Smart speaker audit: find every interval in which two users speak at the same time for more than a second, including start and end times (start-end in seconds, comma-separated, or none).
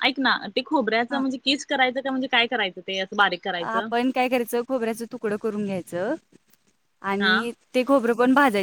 none